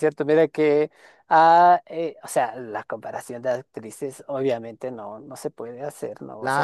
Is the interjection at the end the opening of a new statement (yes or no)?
yes